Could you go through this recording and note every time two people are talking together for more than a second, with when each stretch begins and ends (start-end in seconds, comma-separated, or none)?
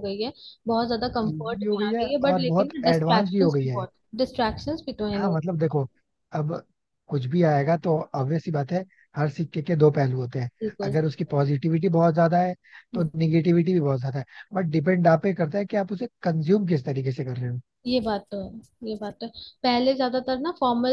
1.2-3.8